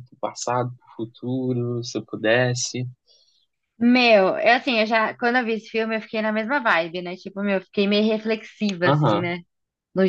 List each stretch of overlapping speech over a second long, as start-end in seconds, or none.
none